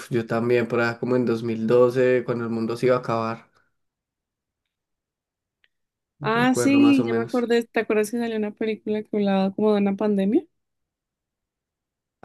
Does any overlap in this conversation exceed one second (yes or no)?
yes